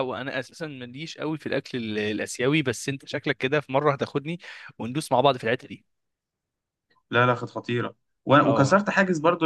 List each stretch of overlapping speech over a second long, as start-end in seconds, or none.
none